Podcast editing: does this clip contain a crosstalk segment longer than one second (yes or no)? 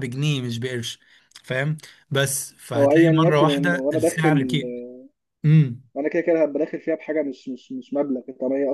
yes